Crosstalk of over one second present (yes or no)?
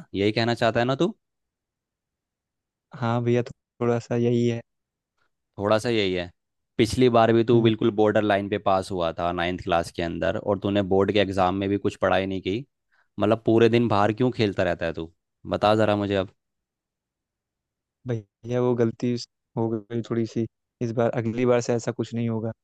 no